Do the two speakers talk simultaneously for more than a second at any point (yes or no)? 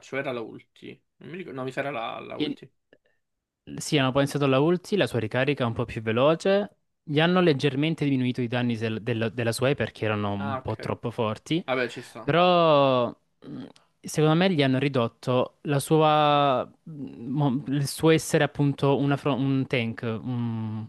no